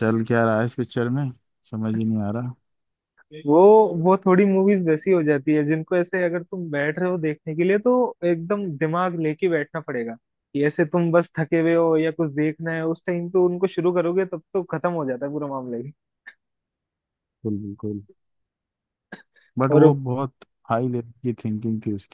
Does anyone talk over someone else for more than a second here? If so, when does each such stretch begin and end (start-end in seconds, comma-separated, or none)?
none